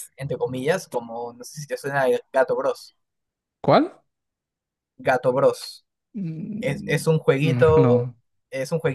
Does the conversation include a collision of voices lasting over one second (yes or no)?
yes